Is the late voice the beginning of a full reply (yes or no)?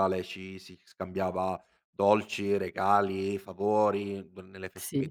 no